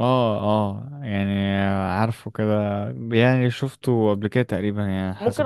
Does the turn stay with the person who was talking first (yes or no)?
no